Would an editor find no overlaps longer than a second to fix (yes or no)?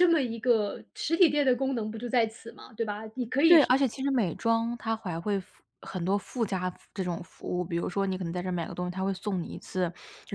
yes